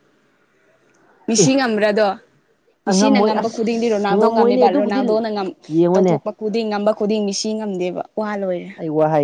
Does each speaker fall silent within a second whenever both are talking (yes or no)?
no